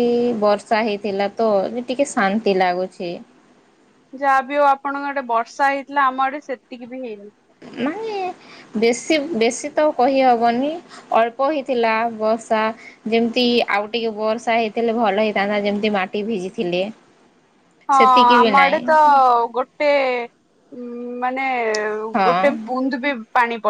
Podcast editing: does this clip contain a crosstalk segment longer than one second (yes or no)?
no